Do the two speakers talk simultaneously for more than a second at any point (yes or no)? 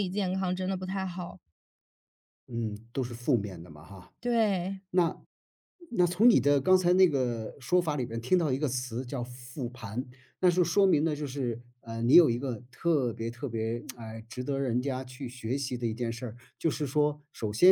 no